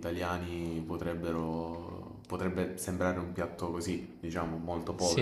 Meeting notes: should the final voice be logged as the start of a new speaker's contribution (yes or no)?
yes